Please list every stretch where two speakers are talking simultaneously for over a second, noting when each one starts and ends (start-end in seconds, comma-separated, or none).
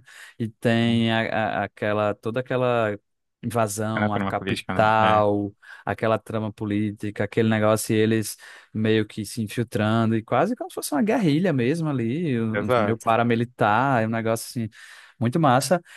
4.0-5.2